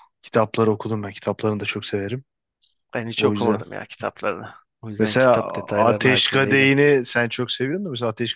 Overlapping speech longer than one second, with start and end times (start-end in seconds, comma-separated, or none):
5.0-6.7